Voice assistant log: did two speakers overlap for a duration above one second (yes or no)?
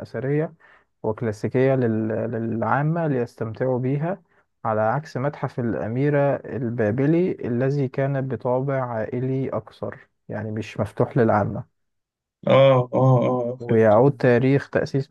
no